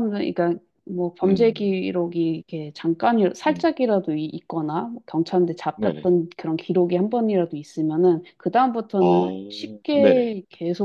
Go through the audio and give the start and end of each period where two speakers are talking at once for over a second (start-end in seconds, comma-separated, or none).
9.0-10.3